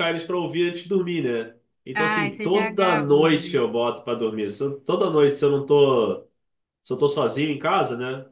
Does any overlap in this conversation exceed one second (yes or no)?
yes